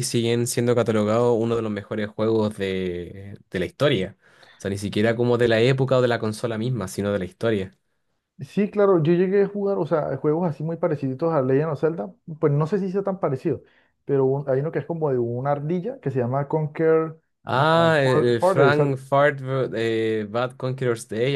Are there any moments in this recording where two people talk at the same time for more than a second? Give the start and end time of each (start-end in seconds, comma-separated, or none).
17.4-19.0